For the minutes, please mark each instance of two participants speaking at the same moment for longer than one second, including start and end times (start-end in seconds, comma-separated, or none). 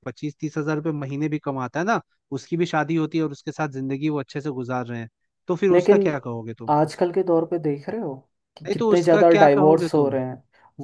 8.7-10.2